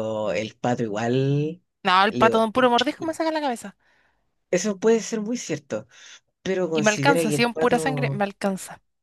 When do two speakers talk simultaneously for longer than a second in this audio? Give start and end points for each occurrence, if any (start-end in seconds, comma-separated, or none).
6.7-8.2